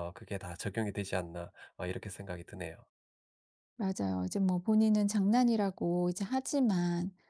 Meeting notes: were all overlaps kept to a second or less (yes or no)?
yes